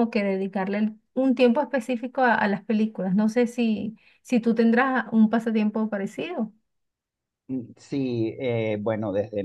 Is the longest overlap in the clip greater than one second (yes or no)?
no